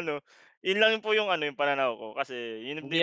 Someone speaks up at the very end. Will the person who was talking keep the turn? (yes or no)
no